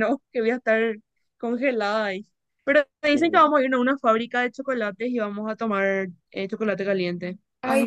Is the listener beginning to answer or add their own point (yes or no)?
yes